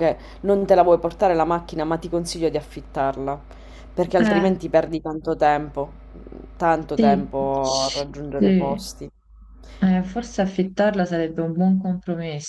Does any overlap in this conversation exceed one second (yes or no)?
yes